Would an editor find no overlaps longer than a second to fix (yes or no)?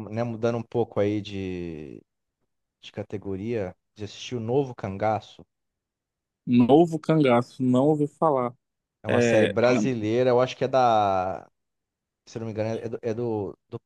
yes